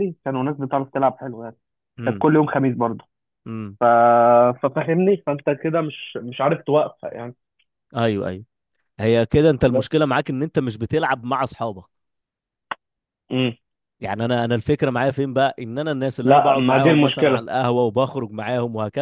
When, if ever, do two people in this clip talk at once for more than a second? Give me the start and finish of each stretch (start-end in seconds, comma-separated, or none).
16.2-17.4